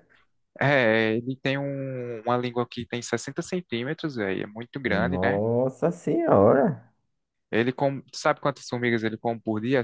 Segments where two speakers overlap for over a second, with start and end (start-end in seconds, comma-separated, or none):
none